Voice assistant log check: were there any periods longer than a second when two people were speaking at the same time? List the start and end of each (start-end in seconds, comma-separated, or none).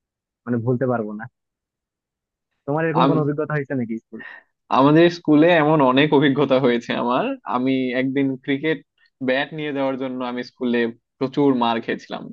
none